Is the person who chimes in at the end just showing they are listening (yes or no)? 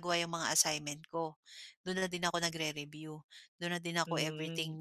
no